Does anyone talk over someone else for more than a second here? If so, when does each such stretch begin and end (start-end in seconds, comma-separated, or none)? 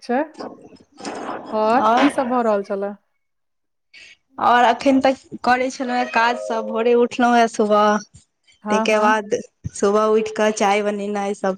none